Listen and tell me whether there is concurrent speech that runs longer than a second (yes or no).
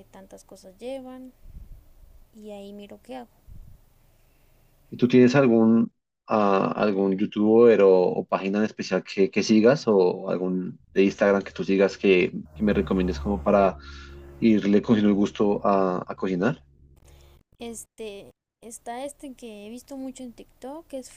no